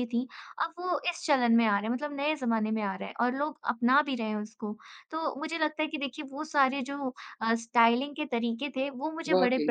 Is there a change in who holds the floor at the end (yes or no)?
no